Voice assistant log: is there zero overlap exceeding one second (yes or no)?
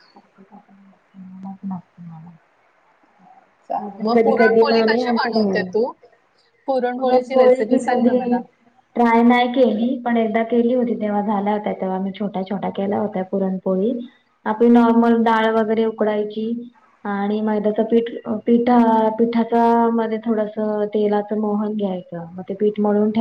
no